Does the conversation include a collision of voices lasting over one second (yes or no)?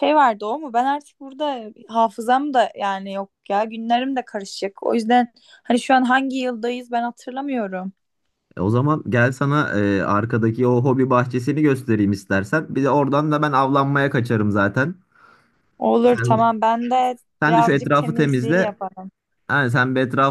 yes